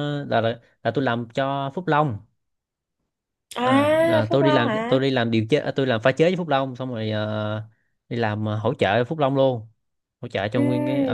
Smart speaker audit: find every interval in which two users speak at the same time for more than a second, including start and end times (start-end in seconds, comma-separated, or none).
3.6-5.0